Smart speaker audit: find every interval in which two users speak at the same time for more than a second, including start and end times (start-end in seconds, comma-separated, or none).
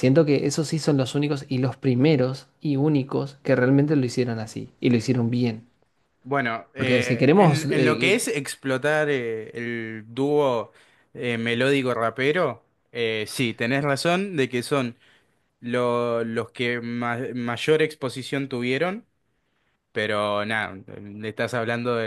6.8-8.2